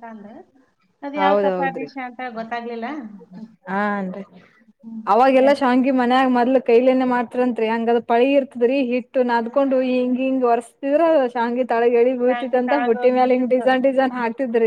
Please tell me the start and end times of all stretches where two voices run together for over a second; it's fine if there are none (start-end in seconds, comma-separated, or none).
12.1-14.0